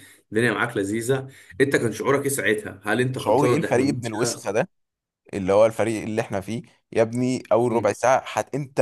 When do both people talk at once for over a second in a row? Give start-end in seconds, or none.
3.1-4.6